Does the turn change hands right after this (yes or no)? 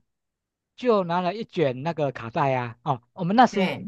no